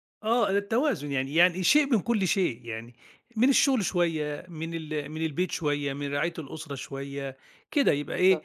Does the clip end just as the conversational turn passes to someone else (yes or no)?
no